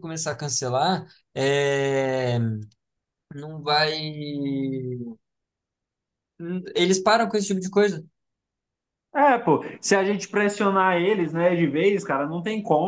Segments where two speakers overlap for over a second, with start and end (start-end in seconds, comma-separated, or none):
none